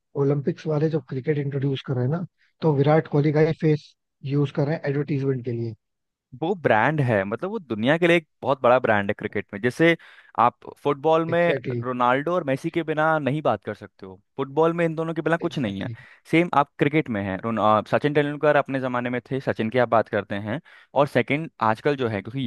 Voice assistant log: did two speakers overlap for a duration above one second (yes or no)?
no